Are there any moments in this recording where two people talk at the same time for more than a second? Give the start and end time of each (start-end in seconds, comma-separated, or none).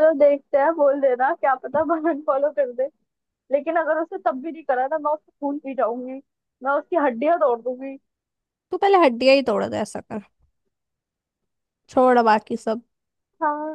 none